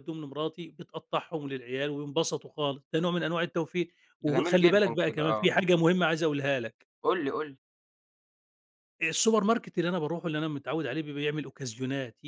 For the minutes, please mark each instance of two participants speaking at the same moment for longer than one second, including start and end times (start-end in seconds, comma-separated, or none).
4.2-5.5